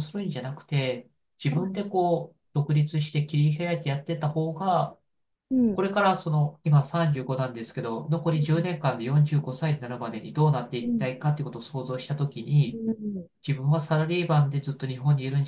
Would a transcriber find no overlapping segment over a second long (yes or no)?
yes